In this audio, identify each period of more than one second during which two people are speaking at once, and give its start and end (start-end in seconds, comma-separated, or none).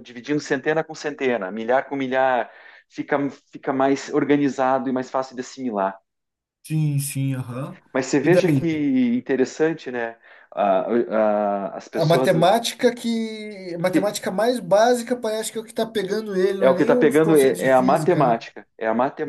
16.6-18.4